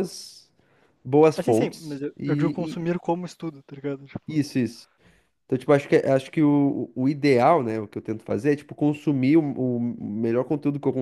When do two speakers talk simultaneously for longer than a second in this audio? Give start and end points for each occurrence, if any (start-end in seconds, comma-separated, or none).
1.4-2.8